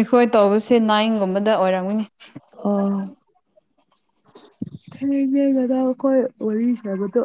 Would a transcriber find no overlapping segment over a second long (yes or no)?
yes